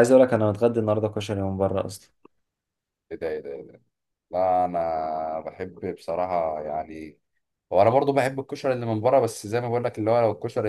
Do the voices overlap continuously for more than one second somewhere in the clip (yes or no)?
no